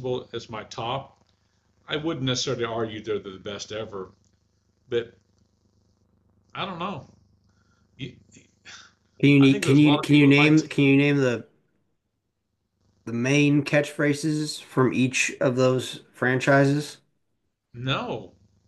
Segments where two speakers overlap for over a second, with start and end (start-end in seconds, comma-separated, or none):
9.4-10.6